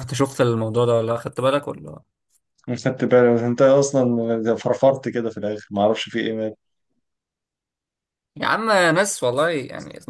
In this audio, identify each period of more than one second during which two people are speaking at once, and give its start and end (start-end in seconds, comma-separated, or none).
none